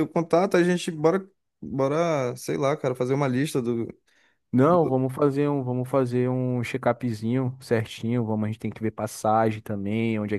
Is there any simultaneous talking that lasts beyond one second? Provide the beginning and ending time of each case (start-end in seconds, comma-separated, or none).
none